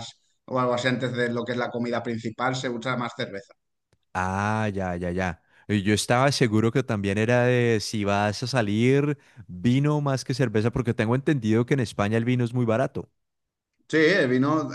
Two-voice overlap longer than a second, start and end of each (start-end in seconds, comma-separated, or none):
none